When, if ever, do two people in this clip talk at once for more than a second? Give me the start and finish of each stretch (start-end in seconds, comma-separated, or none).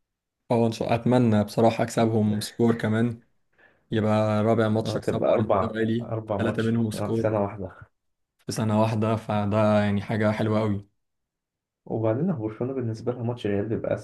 4.8-7.3